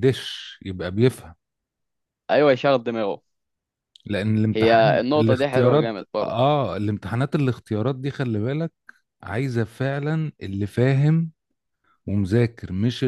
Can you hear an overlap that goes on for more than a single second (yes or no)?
yes